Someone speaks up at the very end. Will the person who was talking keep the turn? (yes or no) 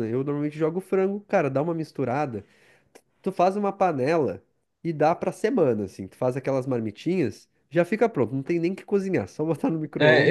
no